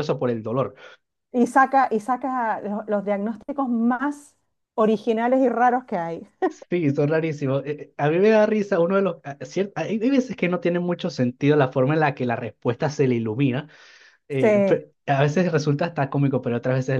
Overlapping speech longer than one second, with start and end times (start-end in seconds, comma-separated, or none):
none